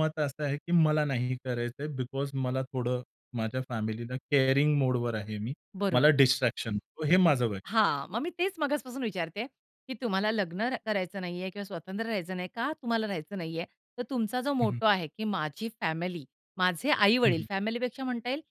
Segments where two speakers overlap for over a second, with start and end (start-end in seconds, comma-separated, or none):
none